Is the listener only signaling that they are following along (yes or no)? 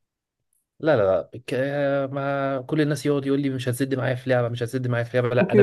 no